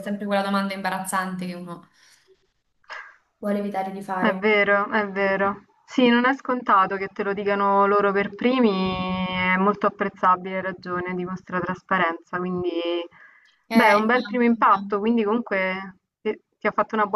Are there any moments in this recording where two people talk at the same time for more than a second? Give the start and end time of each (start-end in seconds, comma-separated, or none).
13.7-15.0